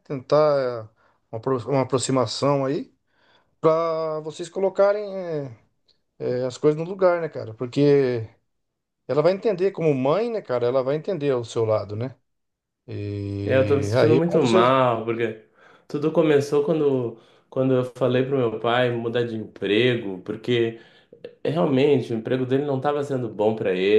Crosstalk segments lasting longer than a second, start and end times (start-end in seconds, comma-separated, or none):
13.4-14.7